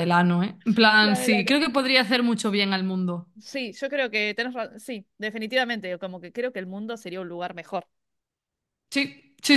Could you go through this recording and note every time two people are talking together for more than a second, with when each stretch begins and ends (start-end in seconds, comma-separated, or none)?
none